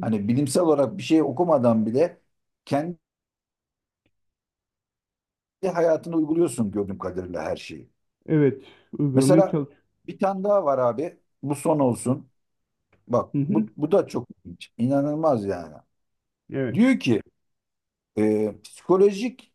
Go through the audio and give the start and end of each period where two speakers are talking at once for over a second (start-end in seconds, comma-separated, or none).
none